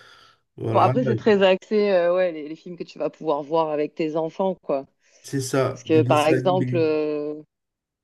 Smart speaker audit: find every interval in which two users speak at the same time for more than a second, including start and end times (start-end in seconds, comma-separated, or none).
5.7-6.9